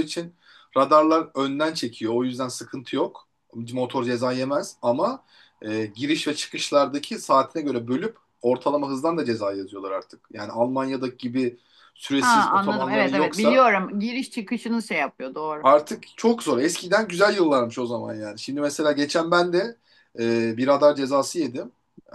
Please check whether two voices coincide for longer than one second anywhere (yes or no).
yes